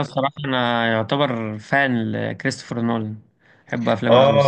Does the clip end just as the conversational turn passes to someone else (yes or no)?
yes